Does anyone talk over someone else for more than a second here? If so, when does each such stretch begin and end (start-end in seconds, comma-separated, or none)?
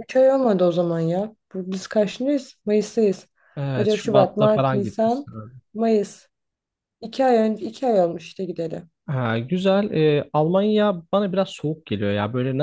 3.8-5.3